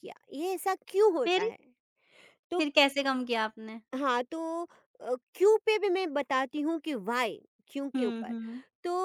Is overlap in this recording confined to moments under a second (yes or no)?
yes